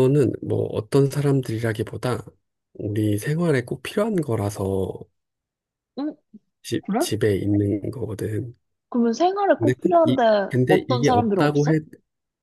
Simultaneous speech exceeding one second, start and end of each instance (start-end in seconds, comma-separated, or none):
9.6-11.8